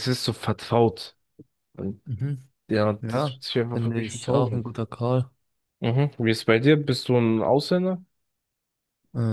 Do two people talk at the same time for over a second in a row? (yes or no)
yes